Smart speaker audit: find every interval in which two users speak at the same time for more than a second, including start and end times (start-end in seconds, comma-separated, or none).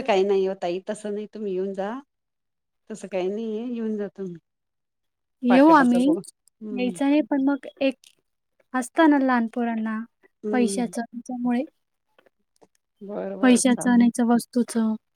none